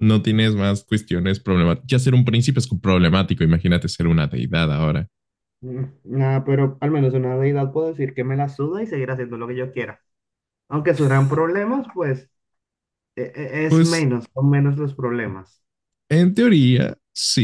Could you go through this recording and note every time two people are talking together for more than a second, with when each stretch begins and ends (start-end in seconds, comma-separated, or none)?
none